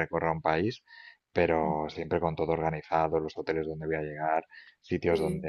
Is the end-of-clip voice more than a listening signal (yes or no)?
no